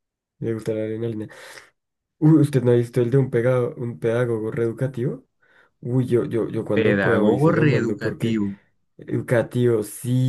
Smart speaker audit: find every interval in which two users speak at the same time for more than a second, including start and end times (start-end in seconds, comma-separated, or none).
6.7-8.4